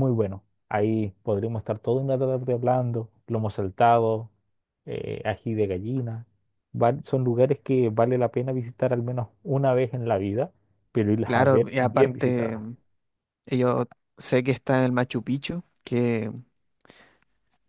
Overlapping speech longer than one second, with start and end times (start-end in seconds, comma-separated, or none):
11.3-12.6